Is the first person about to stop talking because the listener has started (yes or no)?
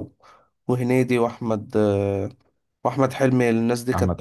yes